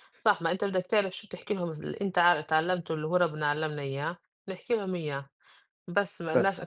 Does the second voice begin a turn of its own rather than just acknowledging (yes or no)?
no